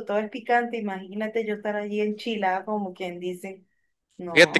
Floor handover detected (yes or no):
yes